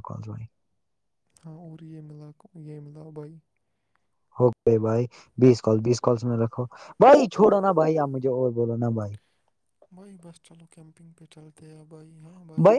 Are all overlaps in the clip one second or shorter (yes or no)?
yes